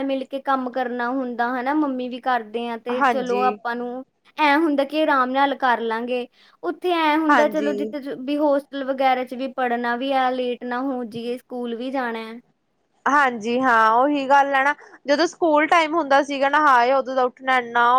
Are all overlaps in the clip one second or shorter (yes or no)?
yes